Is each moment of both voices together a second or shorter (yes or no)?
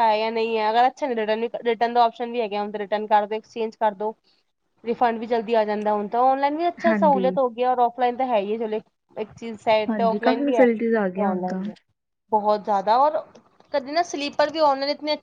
no